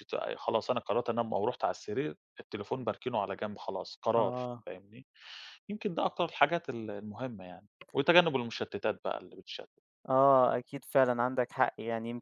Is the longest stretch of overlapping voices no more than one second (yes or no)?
yes